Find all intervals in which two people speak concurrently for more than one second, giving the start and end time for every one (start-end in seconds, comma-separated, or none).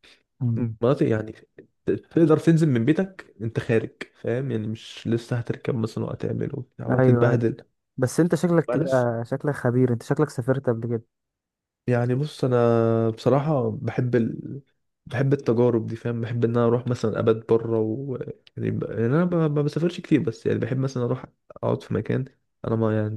none